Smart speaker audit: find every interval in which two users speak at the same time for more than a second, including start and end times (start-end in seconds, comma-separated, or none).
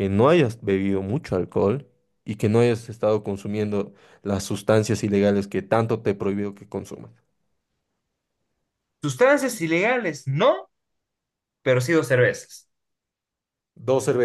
none